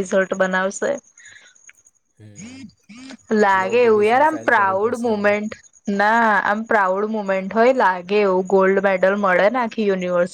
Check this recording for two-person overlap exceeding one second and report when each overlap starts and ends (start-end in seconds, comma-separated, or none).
3.6-5.3